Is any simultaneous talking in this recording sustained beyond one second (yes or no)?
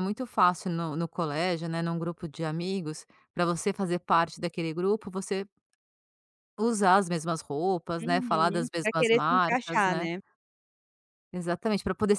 yes